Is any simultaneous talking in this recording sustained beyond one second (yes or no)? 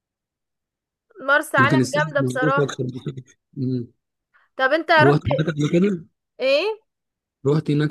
yes